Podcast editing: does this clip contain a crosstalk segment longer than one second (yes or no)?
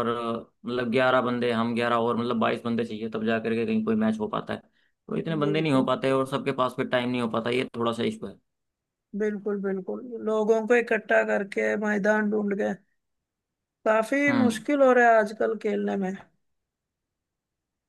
no